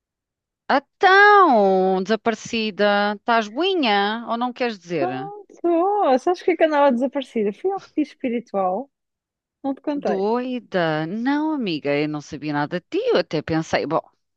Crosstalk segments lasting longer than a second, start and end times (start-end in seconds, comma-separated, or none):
none